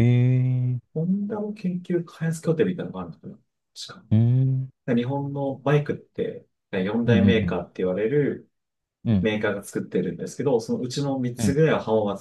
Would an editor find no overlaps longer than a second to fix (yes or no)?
yes